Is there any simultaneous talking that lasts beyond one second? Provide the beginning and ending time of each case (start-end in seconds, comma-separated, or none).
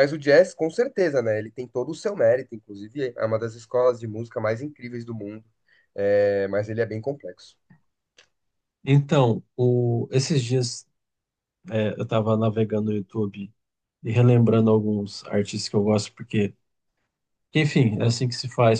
none